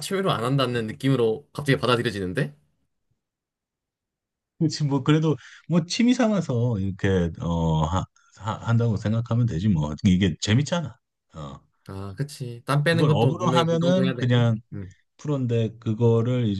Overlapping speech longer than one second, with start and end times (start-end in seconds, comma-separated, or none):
12.8-14.6